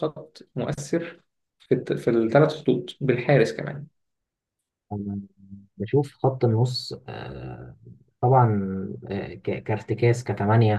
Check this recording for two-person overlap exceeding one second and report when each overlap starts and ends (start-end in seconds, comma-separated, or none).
none